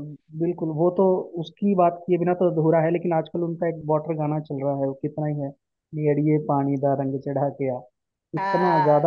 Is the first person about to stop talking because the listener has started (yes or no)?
no